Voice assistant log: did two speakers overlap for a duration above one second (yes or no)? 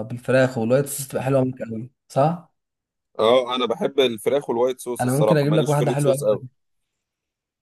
yes